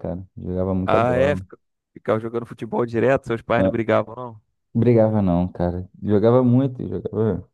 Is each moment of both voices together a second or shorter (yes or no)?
yes